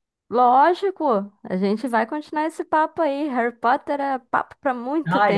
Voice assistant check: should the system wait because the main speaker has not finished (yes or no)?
no